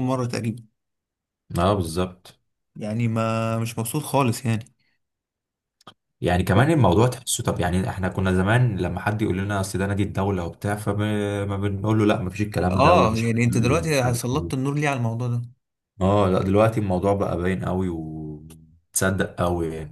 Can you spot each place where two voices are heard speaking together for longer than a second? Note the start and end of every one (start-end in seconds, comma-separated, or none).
12.7-14.7